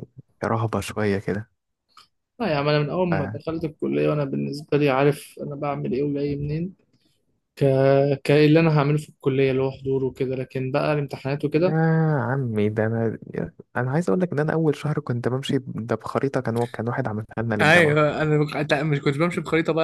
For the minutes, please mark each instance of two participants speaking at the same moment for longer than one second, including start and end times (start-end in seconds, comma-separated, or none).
none